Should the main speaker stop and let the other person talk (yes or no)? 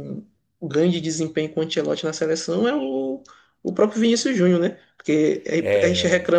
no